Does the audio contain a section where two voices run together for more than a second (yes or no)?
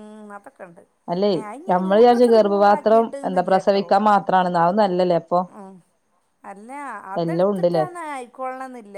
yes